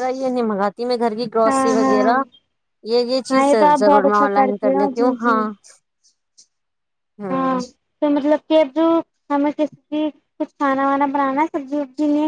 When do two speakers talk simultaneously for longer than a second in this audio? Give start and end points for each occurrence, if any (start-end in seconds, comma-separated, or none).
3.3-5.4